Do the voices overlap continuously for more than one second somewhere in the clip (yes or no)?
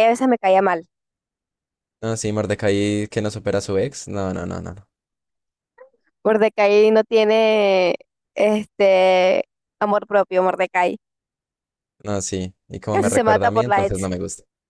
yes